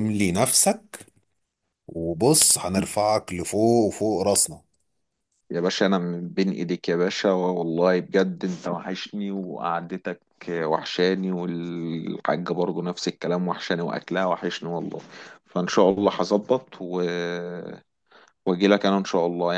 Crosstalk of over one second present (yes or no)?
no